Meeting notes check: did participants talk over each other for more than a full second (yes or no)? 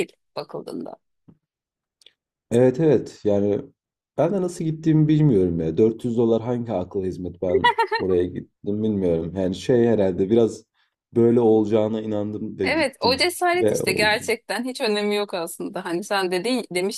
yes